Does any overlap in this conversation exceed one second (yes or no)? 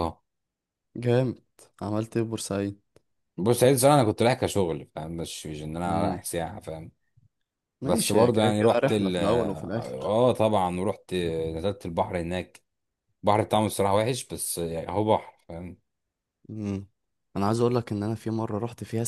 yes